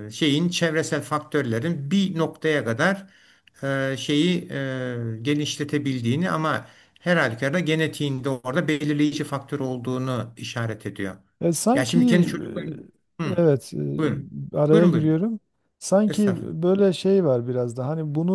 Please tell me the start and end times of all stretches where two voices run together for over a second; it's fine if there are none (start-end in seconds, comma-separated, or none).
none